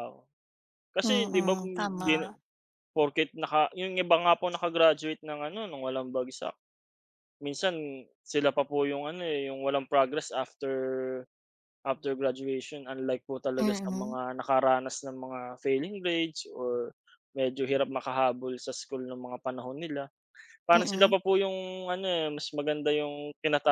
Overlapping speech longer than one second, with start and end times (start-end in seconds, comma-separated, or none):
1.0-2.3